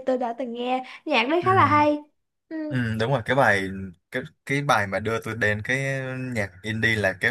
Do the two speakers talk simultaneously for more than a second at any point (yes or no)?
no